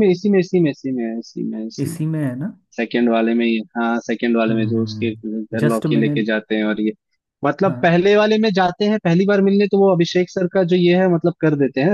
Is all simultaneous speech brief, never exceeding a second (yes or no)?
no